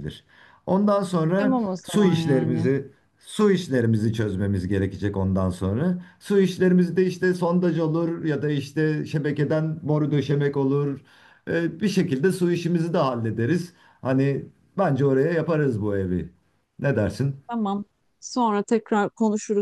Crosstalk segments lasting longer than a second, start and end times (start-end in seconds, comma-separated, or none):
1.4-2.7